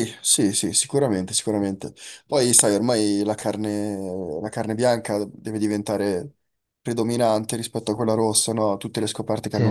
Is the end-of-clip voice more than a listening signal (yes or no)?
yes